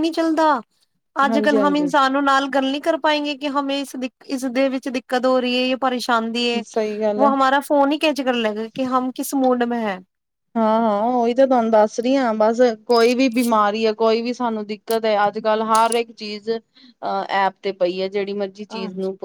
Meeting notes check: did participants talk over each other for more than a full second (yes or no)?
no